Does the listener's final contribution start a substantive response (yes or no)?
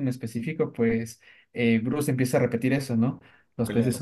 no